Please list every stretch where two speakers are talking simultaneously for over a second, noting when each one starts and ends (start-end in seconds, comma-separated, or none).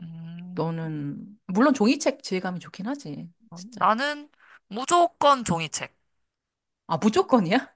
none